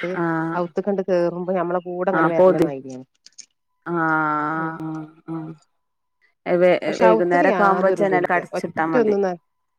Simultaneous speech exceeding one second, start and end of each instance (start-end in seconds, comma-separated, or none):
6.8-9.2